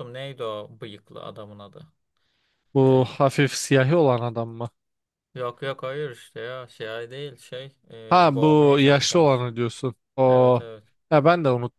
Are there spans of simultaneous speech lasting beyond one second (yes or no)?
yes